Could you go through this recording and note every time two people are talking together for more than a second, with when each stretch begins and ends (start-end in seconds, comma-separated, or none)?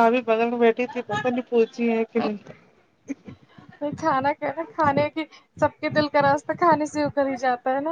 none